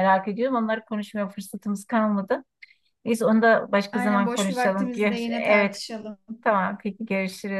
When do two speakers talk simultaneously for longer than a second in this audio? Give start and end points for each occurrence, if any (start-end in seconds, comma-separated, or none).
3.9-5.8